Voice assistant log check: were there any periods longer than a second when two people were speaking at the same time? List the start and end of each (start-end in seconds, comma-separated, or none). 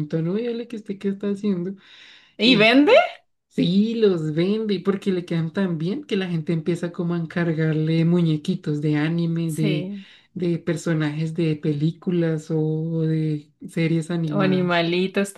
none